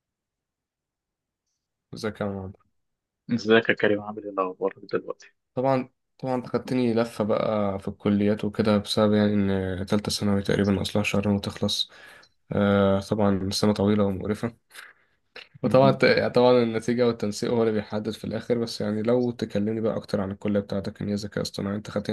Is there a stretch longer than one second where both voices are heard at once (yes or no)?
no